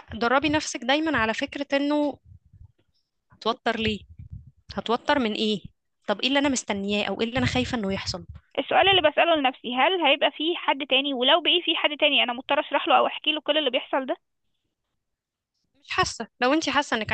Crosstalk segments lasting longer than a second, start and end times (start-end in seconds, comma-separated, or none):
none